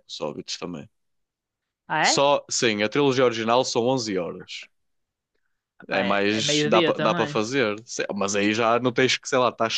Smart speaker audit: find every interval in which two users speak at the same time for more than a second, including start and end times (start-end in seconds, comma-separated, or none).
5.9-7.4